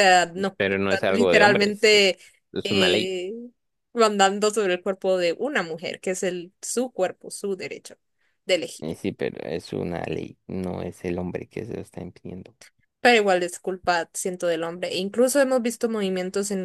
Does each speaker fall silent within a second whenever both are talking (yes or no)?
no